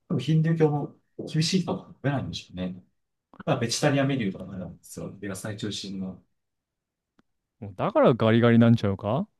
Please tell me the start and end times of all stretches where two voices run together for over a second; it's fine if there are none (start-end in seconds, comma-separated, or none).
none